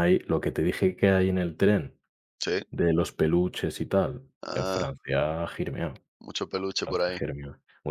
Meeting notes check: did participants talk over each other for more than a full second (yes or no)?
no